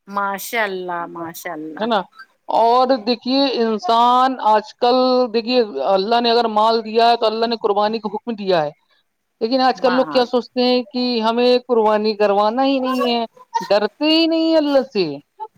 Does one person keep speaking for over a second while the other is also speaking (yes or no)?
no